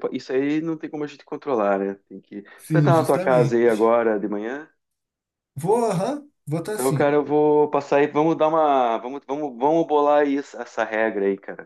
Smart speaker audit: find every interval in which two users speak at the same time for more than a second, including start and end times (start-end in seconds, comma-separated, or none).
2.6-4.0